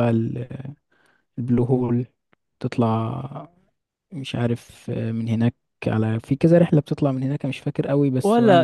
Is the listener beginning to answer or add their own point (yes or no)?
yes